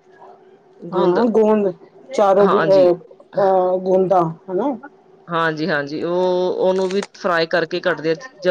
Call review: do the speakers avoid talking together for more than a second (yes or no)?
yes